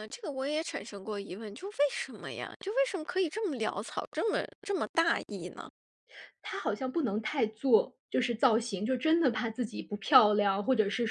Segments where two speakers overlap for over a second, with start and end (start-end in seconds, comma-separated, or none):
none